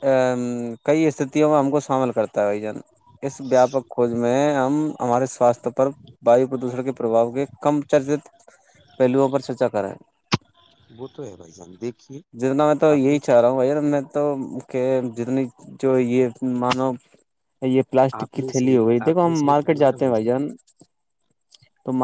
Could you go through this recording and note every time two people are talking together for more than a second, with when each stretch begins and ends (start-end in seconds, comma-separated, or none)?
18.2-19.9